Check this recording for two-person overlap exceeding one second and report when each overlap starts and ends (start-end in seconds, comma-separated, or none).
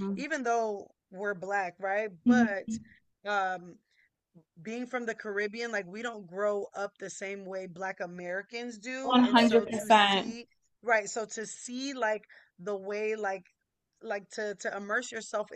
9.0-10.4